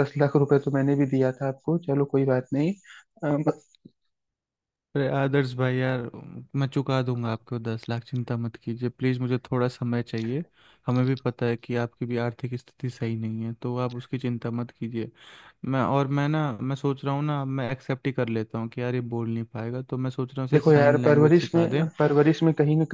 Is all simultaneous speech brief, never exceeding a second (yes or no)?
no